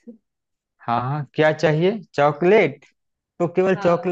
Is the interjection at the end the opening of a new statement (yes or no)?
no